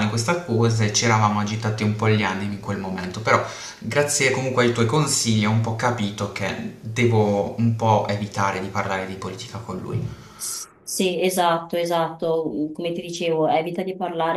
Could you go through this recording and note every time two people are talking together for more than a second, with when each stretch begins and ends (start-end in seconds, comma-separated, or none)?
none